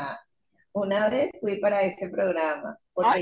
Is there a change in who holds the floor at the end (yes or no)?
no